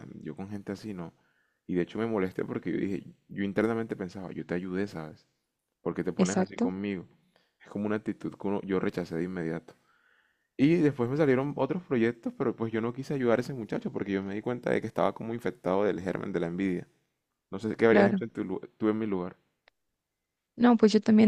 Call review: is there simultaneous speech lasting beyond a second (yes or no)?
no